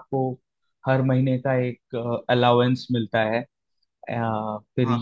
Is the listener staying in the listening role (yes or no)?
no